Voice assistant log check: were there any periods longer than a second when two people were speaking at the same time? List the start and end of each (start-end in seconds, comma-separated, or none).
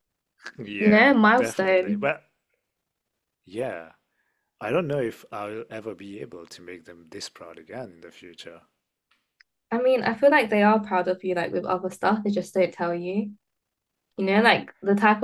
0.8-2.1